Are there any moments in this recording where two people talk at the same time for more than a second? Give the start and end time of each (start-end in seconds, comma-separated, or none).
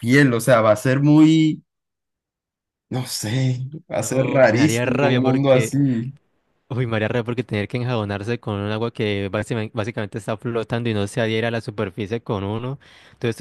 3.9-5.7